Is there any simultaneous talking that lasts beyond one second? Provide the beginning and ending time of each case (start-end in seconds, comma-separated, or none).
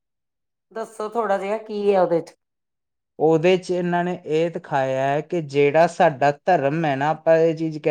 none